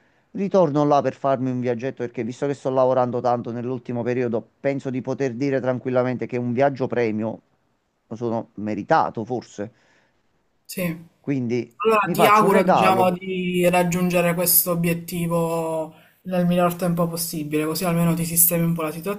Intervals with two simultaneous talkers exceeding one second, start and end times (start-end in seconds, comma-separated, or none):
11.8-13.1